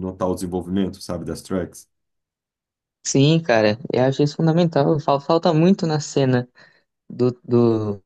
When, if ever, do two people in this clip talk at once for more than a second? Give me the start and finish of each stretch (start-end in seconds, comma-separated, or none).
none